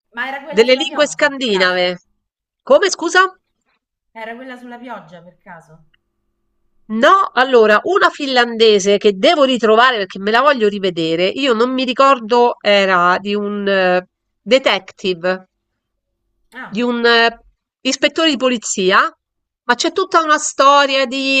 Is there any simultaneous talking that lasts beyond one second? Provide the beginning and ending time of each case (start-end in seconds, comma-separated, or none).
0.6-1.9